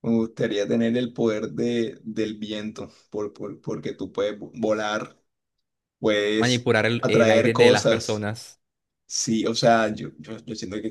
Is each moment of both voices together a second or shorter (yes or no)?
no